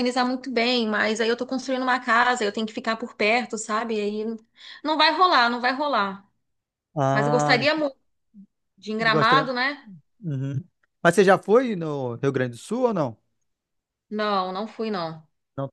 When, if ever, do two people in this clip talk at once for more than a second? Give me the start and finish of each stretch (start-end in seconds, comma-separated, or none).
none